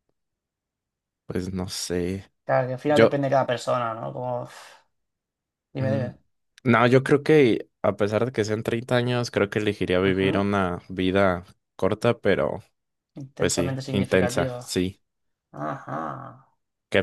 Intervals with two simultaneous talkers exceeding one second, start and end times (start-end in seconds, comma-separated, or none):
13.4-14.8